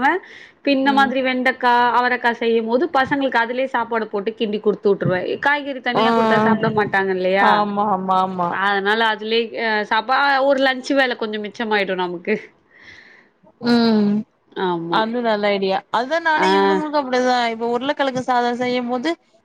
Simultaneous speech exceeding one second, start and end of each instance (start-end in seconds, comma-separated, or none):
none